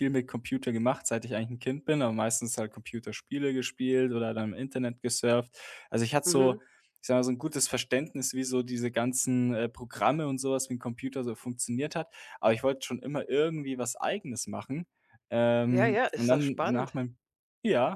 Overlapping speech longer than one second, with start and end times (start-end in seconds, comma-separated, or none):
15.7-16.9